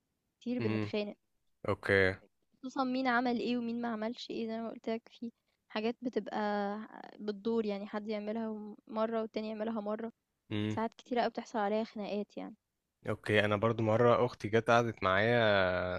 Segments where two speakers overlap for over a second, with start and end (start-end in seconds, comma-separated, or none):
none